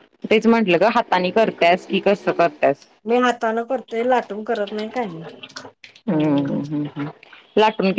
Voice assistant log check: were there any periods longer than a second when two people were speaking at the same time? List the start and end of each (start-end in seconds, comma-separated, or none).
none